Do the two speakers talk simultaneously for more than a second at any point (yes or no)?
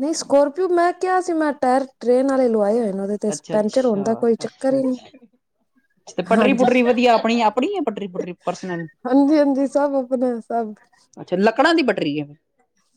yes